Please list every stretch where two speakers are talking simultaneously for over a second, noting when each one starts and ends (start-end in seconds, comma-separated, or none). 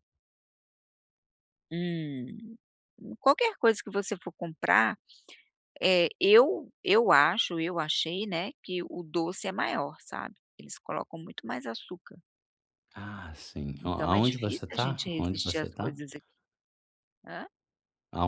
13.8-15.9